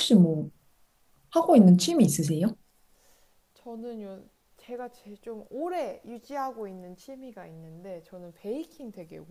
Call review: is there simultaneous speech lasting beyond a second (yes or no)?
no